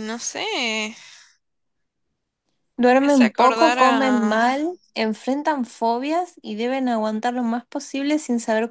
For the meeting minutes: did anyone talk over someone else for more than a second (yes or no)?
yes